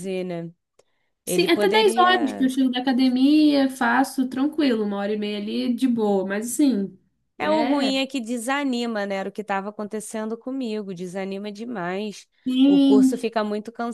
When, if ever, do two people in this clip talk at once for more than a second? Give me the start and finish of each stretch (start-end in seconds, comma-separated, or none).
1.3-2.5